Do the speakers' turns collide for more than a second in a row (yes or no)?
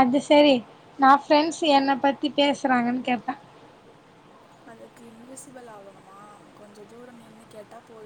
no